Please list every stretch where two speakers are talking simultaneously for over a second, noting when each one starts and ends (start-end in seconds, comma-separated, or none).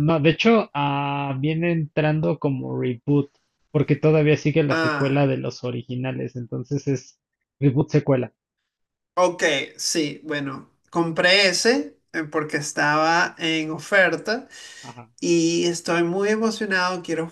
none